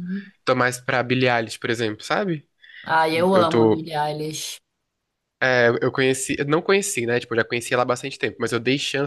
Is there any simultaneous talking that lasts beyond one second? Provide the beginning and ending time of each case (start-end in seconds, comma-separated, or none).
none